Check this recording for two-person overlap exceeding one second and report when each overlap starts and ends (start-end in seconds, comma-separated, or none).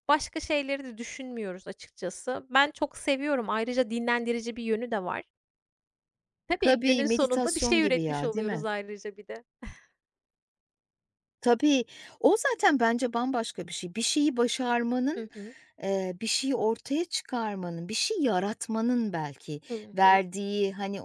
6.6-8.7